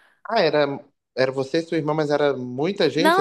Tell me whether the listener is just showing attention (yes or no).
no